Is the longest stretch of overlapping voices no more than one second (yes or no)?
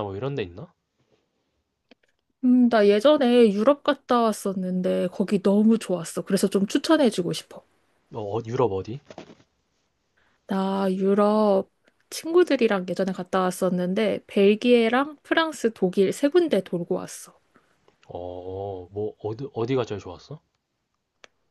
yes